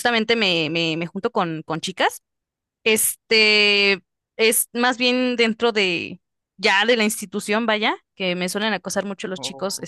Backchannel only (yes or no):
yes